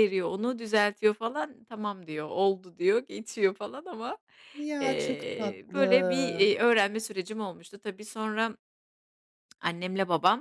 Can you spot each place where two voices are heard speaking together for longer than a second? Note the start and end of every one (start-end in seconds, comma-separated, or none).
4.8-6.5